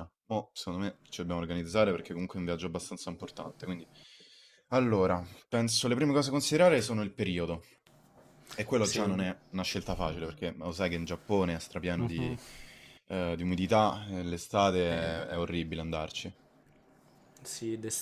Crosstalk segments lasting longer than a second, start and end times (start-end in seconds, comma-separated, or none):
none